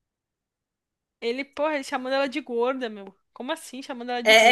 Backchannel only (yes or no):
no